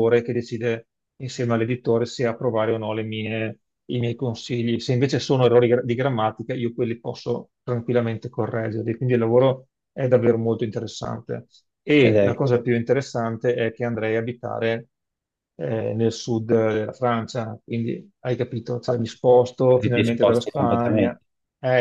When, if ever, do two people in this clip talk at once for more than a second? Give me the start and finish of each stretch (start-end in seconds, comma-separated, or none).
19.9-21.2